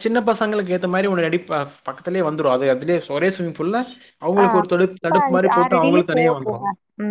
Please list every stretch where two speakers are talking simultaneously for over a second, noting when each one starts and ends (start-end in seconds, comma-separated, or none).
4.4-6.6